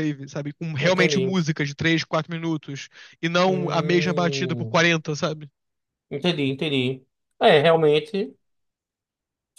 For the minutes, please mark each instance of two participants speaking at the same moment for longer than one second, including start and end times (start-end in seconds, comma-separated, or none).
3.5-4.8